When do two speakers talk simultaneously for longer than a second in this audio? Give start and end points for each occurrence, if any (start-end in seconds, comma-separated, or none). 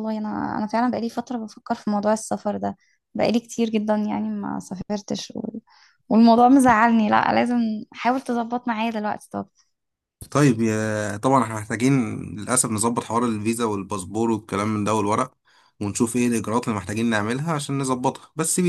none